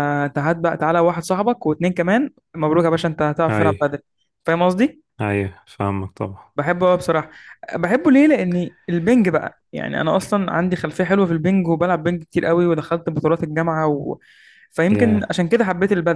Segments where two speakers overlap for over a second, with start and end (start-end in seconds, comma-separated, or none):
none